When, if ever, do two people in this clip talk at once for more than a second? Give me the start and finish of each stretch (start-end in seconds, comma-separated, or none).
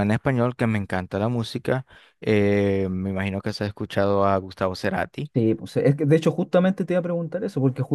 none